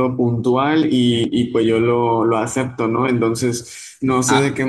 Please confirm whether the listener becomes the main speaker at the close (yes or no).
no